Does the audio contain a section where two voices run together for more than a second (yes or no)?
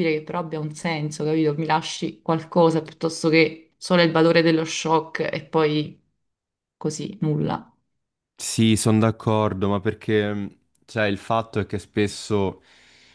no